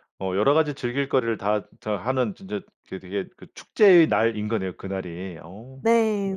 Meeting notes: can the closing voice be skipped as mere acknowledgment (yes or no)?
no